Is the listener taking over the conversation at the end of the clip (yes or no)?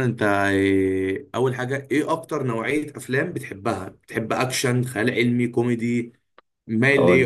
yes